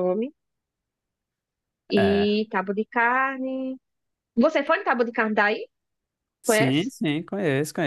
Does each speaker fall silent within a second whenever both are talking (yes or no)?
yes